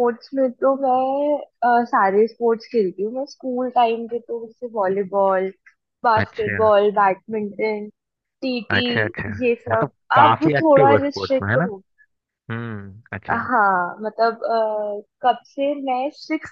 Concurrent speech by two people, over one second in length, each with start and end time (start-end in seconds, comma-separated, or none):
9.7-11.7